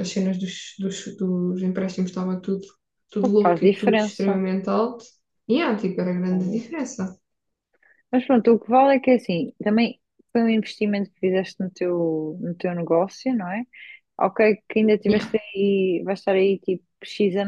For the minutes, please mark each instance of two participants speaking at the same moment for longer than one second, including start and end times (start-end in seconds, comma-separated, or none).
3.2-4.4